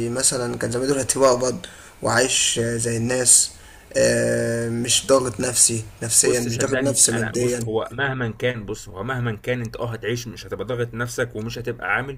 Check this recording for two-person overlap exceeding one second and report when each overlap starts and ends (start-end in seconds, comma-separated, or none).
6.2-7.6